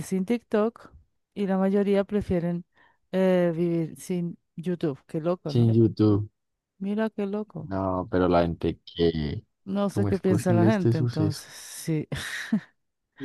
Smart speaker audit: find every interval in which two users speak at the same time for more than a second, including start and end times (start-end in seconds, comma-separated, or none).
9.9-11.5